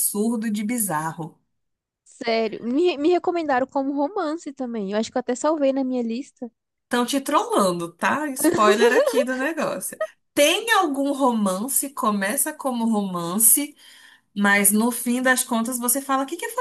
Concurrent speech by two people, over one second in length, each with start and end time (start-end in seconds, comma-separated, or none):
none